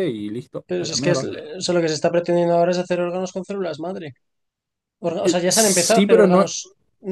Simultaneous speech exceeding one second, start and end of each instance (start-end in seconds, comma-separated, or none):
5.2-6.5